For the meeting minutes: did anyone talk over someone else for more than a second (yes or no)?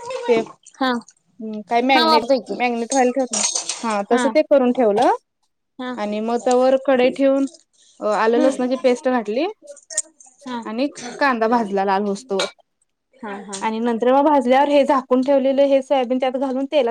no